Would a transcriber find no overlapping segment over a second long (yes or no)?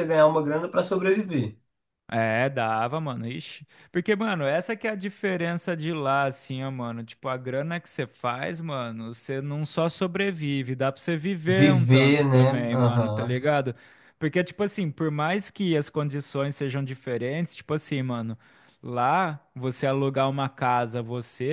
no